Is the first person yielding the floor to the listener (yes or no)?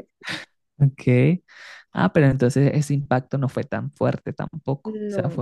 no